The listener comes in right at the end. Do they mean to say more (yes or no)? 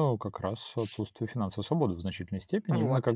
no